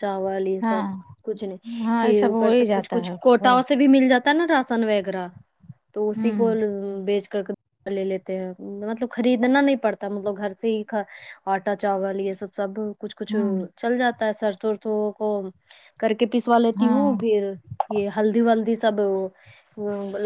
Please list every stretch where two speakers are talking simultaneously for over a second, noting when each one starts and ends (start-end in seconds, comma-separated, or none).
2.0-3.6